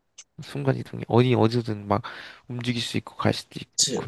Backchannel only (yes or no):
no